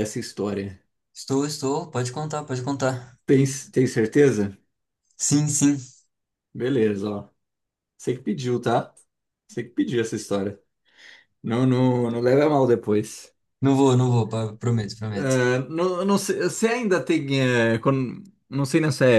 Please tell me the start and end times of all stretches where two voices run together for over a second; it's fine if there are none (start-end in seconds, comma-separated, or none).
none